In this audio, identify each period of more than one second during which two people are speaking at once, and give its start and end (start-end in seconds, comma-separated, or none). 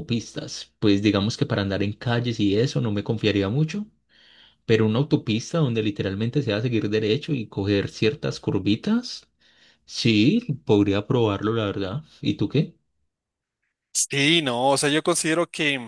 none